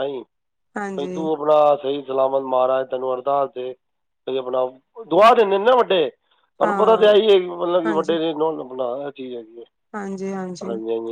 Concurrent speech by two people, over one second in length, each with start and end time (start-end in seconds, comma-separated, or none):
none